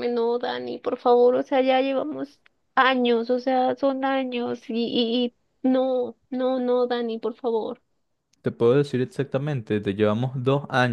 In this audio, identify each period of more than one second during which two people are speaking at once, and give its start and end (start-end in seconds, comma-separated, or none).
none